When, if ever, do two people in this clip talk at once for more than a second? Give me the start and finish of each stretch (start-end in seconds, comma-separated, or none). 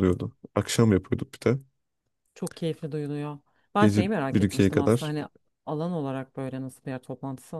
3.8-5.1